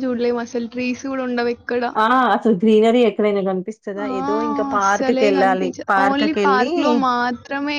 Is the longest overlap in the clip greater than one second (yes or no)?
yes